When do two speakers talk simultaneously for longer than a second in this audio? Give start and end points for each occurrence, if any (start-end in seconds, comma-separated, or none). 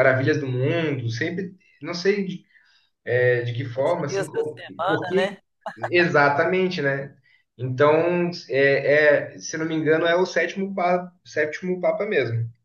3.7-5.4